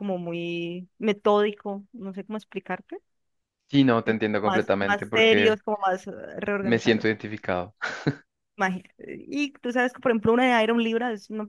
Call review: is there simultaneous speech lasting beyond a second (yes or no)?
yes